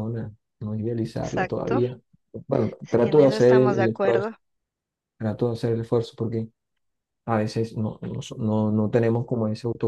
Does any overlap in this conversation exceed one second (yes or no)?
yes